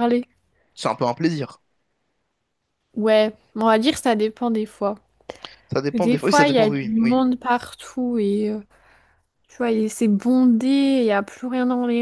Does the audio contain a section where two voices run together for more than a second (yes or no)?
yes